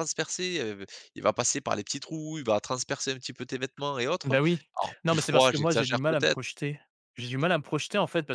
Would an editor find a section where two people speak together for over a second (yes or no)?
yes